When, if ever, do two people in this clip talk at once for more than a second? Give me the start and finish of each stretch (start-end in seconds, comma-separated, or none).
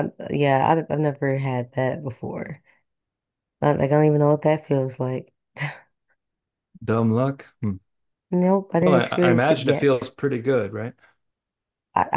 8.8-10.1